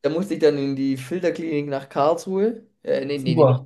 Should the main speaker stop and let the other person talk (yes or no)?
no